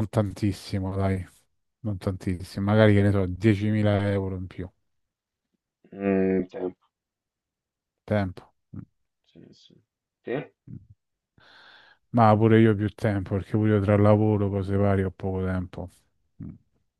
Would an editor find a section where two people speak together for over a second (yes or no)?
no